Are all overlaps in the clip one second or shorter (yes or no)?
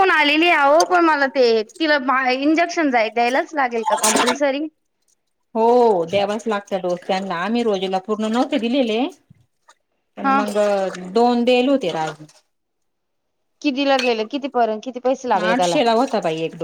yes